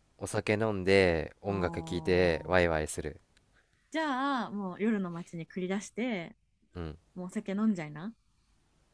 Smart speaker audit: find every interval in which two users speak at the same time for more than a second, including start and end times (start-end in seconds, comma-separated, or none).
1.5-2.8